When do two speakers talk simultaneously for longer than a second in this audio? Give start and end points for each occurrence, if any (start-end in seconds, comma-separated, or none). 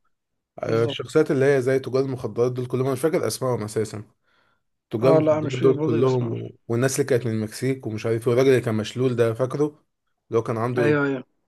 5.0-6.3